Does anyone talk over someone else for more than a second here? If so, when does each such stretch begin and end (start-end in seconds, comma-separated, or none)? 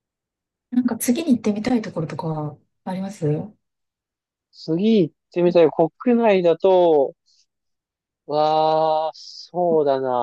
none